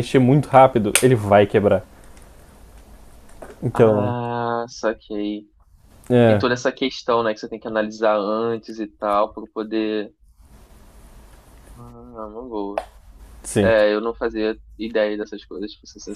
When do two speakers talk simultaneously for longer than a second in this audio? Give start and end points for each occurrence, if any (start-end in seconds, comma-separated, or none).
none